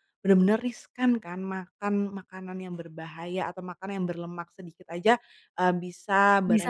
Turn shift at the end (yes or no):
no